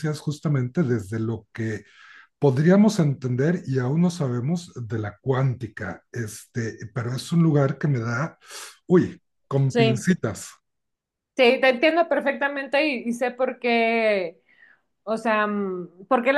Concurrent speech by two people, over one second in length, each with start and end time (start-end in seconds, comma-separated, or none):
none